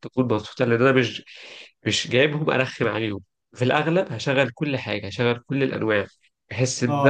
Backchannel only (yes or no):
no